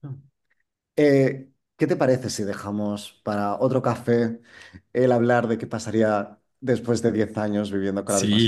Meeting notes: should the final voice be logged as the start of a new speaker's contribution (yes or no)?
yes